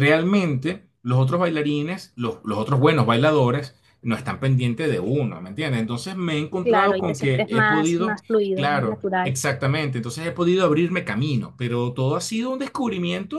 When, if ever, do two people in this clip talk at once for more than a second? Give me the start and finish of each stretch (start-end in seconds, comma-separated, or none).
6.6-9.3